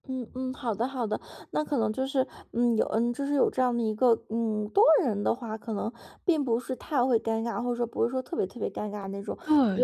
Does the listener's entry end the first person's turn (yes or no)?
yes